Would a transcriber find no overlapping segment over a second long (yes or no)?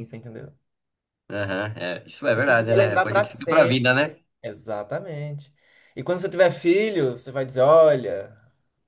no